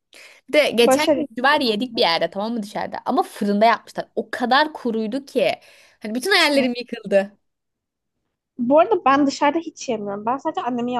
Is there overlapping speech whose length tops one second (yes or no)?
no